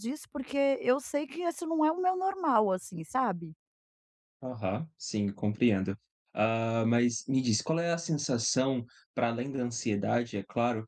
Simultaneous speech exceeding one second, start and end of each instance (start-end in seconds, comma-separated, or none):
none